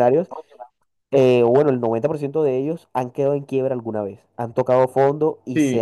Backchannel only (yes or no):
no